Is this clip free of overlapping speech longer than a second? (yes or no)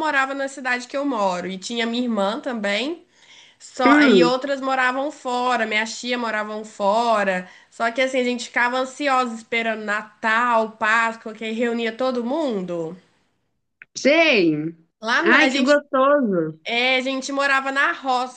yes